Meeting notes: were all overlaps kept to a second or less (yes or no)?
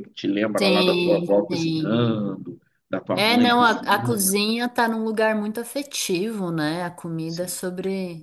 no